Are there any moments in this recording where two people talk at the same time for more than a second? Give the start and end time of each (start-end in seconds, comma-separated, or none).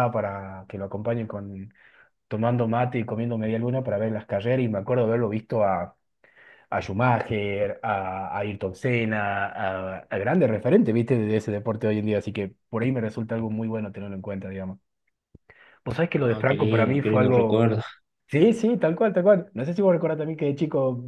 16.1-17.7